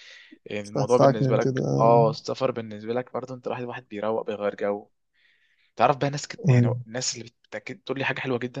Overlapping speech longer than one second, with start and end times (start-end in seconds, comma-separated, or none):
0.6-2.0